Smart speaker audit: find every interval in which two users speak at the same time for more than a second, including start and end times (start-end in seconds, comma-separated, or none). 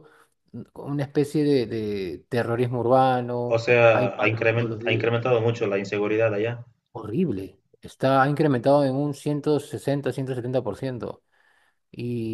3.5-5.1